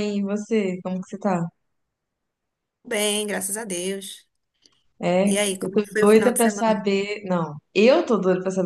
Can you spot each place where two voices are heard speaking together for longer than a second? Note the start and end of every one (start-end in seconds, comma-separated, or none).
5.2-6.9